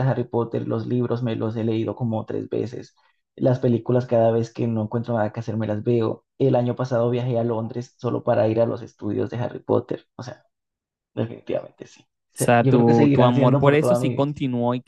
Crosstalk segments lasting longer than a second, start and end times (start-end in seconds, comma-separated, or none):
12.3-14.3